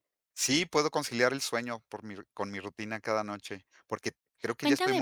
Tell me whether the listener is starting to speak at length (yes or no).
yes